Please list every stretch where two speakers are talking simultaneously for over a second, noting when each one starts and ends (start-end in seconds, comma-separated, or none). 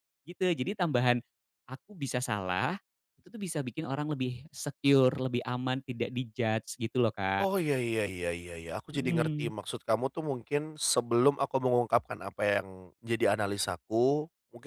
none